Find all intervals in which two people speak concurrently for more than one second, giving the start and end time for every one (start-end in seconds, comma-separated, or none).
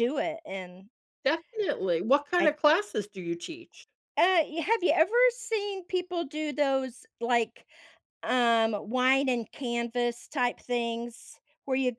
none